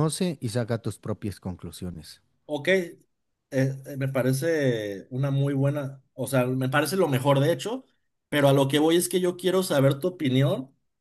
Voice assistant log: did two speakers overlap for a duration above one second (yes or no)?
no